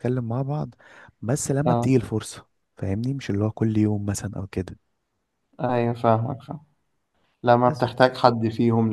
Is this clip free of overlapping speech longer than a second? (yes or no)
yes